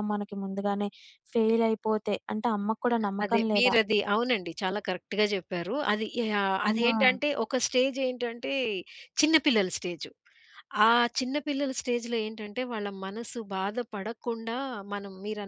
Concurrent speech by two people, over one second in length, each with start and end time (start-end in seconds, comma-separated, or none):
none